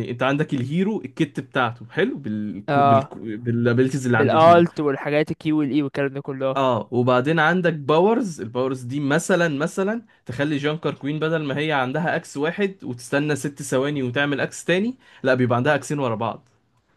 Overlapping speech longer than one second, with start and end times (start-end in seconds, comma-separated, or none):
none